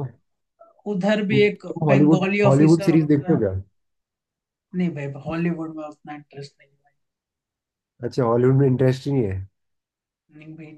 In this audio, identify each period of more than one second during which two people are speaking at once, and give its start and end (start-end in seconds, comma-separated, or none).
1.3-3.4